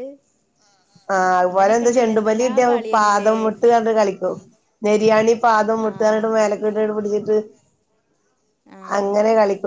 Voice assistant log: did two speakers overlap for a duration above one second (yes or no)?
yes